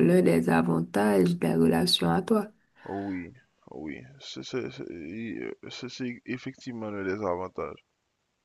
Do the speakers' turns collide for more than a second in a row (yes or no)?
no